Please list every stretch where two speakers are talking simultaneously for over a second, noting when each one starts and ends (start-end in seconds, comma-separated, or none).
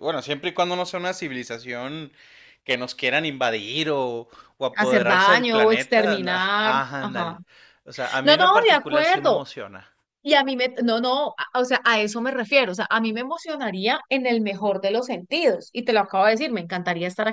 4.7-7.4, 8.2-9.5